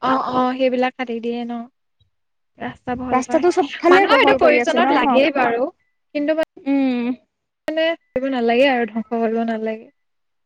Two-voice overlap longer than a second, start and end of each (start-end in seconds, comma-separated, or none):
3.1-5.2